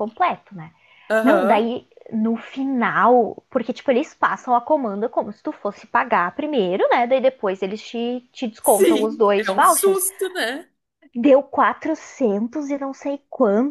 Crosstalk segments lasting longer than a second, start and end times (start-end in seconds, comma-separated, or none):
8.6-10.0